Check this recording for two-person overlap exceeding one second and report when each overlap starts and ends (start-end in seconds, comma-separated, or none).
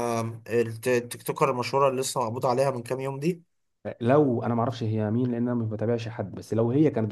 none